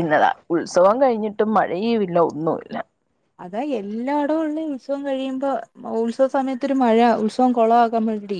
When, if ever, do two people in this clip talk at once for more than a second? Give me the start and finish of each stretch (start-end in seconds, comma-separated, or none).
none